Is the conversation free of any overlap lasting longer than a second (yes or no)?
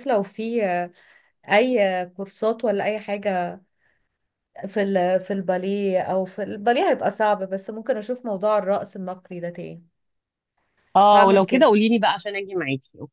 yes